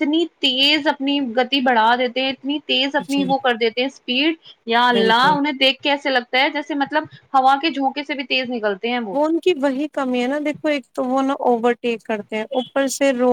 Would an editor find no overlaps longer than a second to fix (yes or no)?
yes